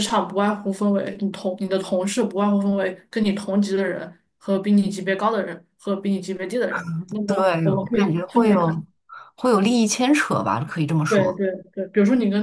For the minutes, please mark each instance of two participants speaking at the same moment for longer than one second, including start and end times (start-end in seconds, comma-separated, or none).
7.2-8.8